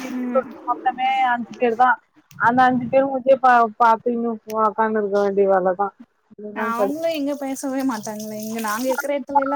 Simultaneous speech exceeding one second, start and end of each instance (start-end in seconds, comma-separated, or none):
none